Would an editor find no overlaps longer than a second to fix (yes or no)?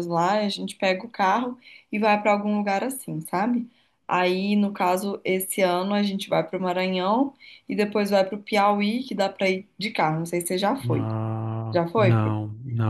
yes